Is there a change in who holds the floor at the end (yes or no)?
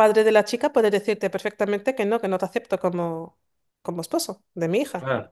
yes